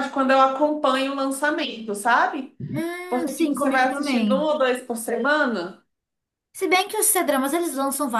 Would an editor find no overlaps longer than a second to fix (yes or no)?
no